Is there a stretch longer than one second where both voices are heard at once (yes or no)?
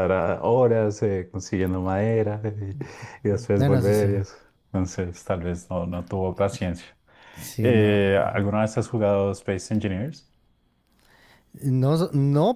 no